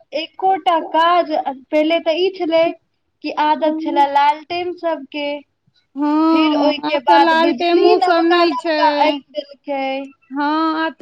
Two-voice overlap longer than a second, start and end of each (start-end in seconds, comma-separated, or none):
6.8-8.8